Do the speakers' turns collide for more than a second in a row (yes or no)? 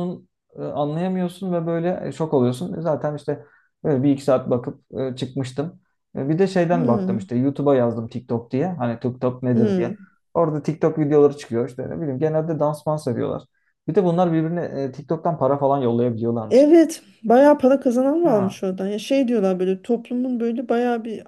no